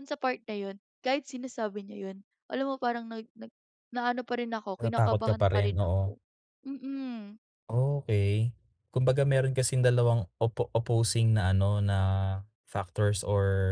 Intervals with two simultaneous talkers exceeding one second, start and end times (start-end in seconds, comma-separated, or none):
4.8-6.2